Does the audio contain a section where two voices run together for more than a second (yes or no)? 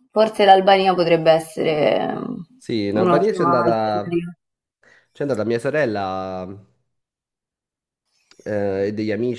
yes